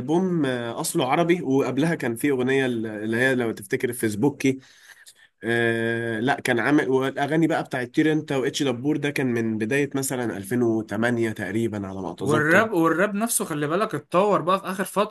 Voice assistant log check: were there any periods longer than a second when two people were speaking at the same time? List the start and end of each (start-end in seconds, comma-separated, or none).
none